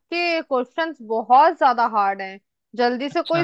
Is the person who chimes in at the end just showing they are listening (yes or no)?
yes